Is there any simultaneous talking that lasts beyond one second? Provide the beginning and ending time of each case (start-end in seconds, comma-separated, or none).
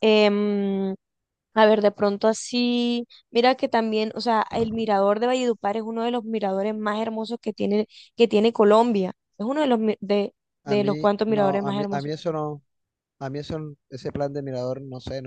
10.6-12.1